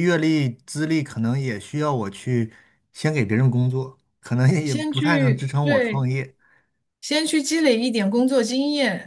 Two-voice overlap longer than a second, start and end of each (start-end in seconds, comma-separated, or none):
4.6-6.1